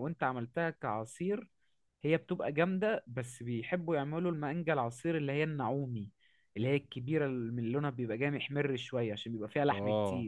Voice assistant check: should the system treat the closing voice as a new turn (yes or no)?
yes